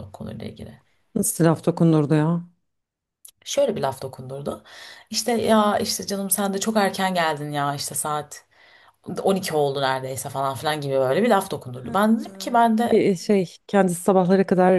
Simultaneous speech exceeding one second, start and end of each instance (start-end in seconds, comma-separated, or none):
none